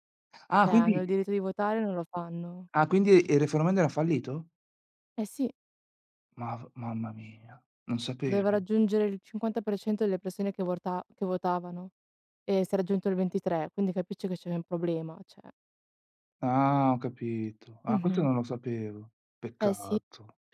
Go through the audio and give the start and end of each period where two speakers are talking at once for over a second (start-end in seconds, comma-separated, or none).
none